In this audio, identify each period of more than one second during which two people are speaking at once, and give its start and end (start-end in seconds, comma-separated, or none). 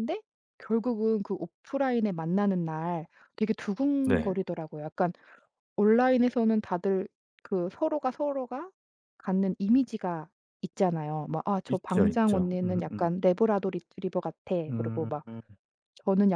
11.7-13.1